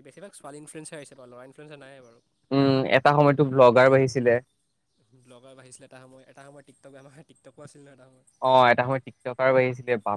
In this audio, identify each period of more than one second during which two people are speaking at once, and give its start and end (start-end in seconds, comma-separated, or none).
none